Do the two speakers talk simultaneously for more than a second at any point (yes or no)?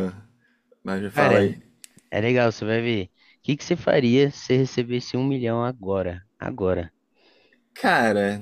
no